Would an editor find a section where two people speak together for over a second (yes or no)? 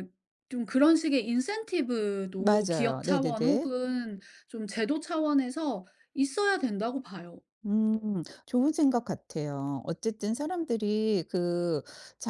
yes